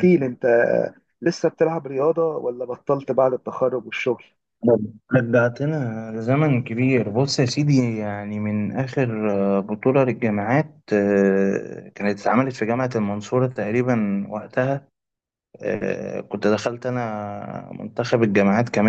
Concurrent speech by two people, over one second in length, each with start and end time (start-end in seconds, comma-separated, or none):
none